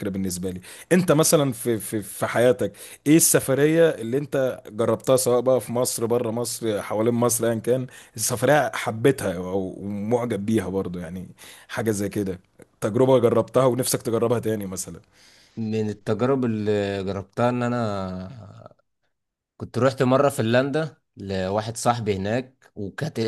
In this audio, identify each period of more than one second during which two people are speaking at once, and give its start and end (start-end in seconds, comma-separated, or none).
none